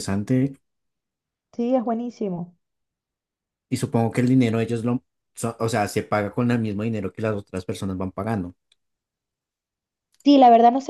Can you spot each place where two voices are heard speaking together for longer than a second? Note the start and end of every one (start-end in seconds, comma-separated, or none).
none